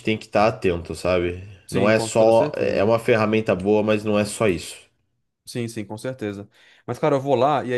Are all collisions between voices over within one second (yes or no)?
no